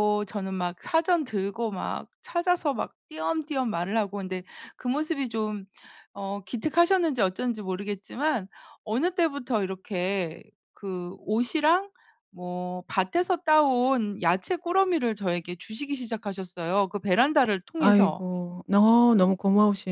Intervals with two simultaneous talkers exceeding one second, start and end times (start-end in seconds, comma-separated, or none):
none